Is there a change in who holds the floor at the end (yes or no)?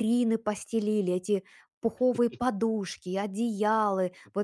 no